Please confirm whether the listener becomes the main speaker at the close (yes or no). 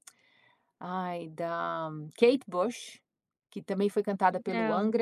no